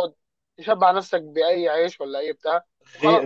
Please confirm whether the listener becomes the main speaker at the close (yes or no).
yes